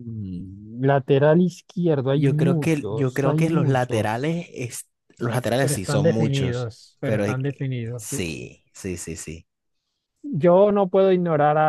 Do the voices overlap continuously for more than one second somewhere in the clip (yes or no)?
yes